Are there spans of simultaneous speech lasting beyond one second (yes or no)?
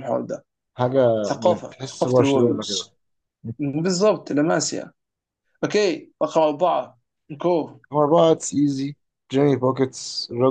yes